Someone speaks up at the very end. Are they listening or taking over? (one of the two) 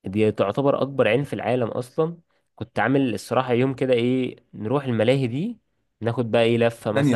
taking over